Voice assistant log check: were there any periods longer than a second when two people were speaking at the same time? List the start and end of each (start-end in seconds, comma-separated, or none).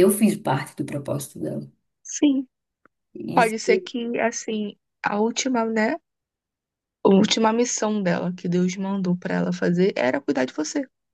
none